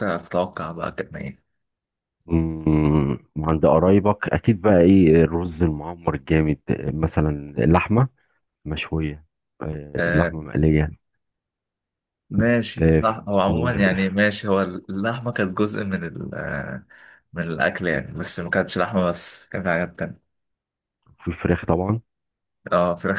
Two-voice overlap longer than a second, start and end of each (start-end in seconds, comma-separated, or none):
12.8-14.2